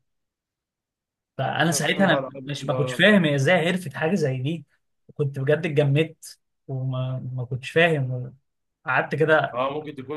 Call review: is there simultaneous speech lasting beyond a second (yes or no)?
yes